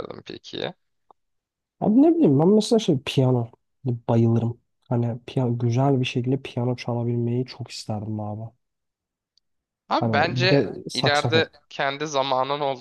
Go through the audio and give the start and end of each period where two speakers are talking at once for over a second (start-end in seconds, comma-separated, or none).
10.0-11.5